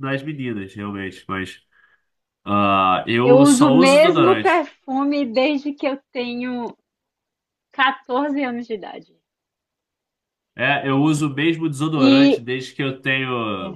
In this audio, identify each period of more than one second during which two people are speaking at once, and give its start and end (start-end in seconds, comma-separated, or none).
3.2-4.7